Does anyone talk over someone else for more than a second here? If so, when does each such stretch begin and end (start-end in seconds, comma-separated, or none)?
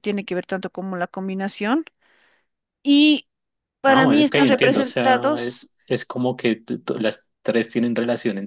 3.9-5.7